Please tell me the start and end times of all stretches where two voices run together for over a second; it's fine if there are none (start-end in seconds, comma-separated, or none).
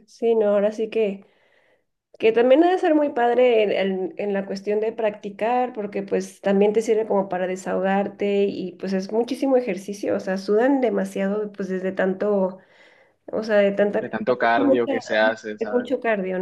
14.0-15.9